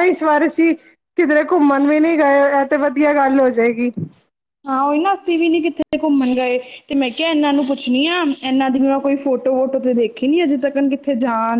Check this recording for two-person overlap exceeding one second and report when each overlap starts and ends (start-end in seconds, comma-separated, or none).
none